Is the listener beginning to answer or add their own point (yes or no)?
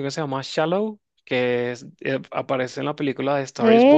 yes